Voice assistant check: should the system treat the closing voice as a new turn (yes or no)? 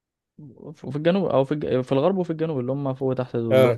no